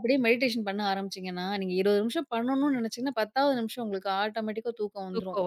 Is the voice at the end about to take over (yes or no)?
no